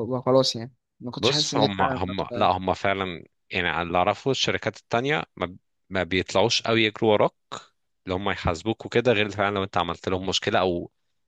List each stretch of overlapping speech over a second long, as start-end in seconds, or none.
1.2-2.5